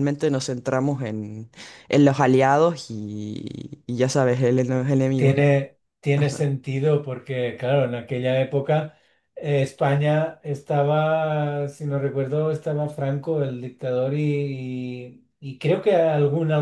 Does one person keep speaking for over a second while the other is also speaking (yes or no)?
no